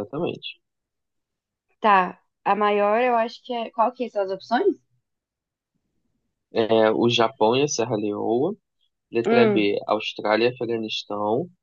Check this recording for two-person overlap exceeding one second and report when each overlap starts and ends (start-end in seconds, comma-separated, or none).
none